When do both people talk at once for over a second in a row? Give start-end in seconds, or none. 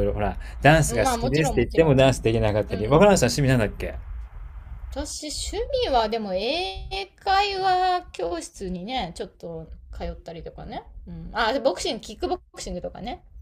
0.9-2.1